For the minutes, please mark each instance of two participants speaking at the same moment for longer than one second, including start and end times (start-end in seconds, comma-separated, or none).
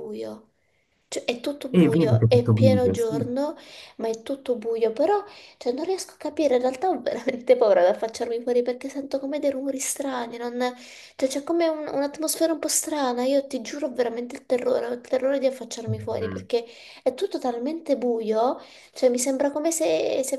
1.7-3.3